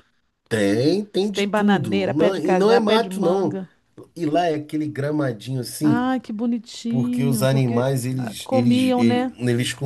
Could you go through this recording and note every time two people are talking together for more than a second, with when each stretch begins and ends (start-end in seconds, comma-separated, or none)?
1.2-3.6, 6.9-9.3